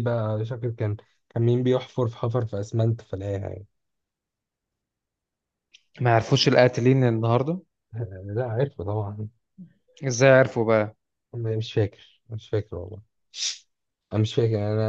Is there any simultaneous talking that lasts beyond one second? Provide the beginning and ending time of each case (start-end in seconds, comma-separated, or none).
none